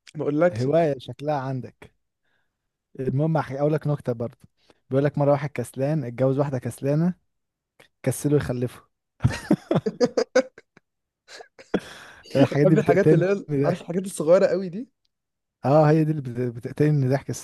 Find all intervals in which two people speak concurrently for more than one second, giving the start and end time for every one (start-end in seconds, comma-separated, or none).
12.5-14.0